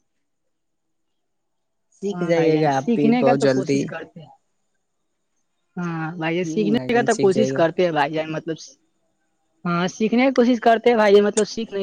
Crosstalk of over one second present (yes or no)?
yes